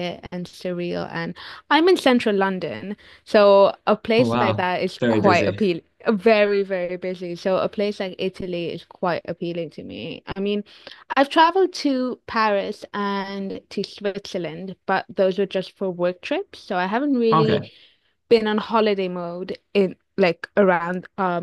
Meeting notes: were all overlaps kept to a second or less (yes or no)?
no